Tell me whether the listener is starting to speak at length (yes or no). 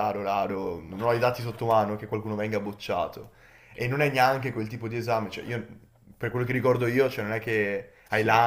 no